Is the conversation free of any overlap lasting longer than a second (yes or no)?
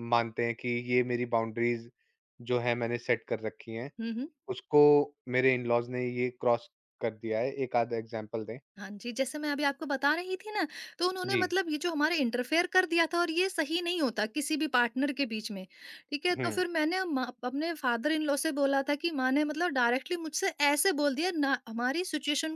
yes